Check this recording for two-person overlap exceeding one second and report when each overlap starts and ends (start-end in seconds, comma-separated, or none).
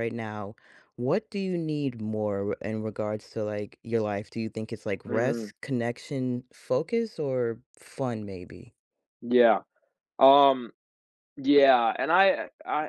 none